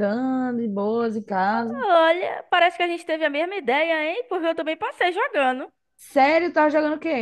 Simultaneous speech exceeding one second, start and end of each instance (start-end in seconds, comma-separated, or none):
none